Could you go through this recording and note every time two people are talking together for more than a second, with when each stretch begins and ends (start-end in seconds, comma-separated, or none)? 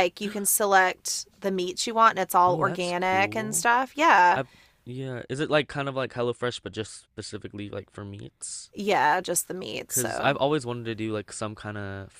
2.5-3.7